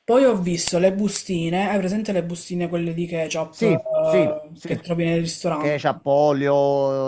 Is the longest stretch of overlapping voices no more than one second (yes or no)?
no